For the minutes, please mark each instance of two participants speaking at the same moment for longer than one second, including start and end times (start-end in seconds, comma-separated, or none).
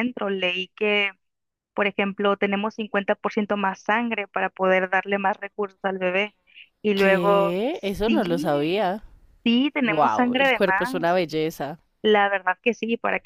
6.9-8.9, 9.8-11.2